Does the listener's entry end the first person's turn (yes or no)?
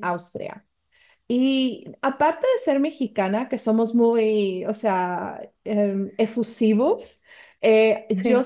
no